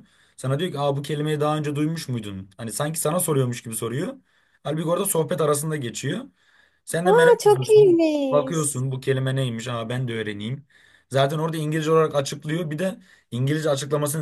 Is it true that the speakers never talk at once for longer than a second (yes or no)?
no